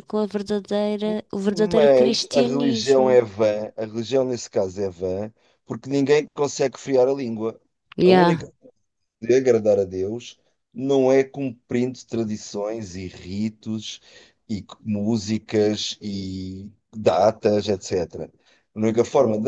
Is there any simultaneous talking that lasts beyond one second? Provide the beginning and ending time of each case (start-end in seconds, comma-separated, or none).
1.5-3.2